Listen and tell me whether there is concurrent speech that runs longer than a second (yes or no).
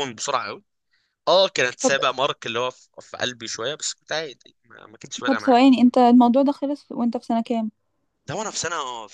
no